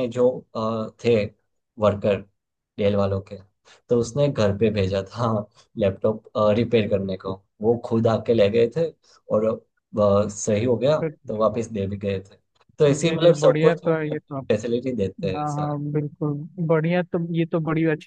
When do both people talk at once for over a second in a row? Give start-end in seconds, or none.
12.9-14.4